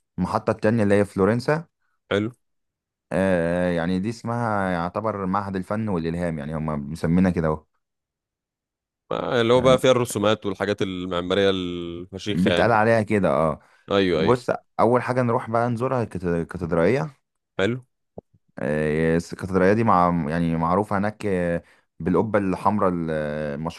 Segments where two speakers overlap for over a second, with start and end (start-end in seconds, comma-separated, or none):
none